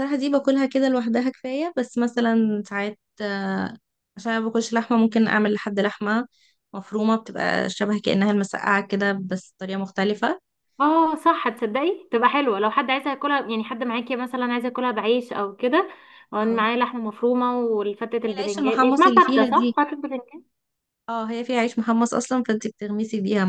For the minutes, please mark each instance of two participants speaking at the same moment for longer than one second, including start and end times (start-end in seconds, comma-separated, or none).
18.3-19.8